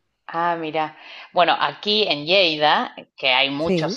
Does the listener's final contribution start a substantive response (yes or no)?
no